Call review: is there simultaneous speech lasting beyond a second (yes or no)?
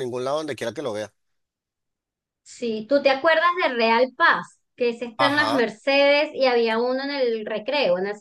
no